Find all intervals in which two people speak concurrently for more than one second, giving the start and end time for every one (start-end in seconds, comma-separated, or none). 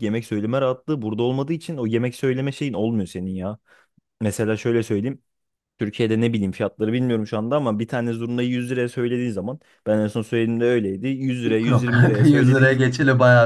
11.4-12.8